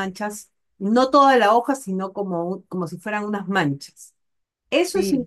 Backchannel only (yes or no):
no